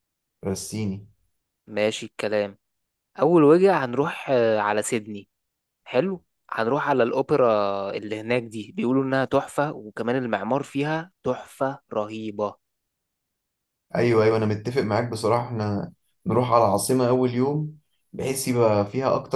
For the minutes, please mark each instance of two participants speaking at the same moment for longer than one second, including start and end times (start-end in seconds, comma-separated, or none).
none